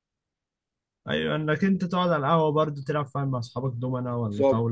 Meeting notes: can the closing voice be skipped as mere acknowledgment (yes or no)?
no